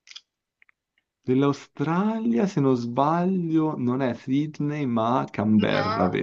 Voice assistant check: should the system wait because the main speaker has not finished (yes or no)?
no